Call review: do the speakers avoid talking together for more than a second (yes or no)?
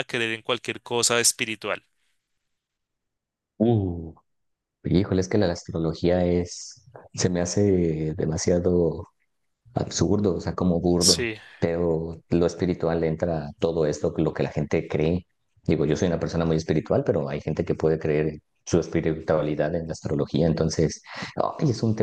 yes